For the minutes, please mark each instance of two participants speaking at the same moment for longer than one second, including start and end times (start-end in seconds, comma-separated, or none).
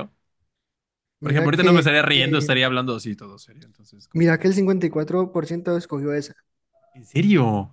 1.2-2.5